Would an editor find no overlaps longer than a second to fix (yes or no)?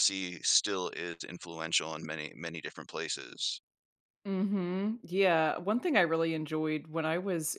yes